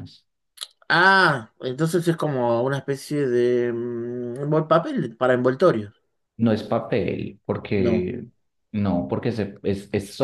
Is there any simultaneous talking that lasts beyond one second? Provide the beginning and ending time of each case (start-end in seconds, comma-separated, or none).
none